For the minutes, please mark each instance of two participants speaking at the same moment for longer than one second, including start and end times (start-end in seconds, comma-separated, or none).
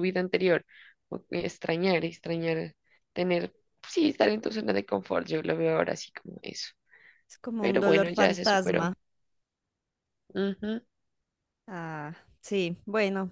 7.6-8.9